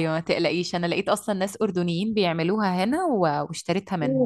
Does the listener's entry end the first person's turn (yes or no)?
yes